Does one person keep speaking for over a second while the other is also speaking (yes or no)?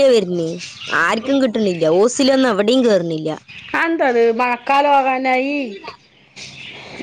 no